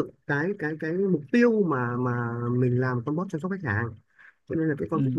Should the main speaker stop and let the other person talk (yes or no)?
no